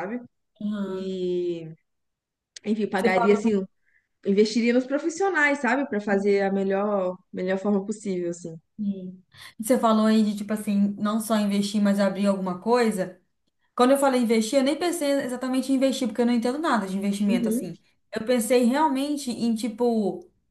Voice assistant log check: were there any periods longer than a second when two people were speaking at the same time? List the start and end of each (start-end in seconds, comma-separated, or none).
none